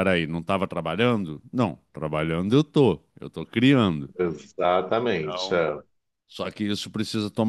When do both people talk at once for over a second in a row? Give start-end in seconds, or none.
none